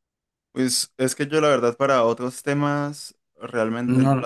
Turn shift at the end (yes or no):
no